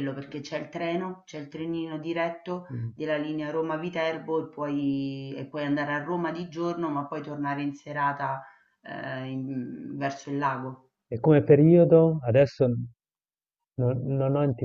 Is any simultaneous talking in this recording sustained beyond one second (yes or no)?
no